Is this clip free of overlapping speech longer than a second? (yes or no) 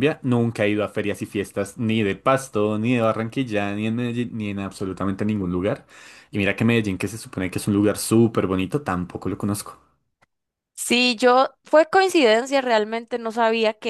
yes